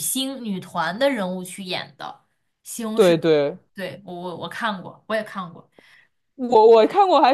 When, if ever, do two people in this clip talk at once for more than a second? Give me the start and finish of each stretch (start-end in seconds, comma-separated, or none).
none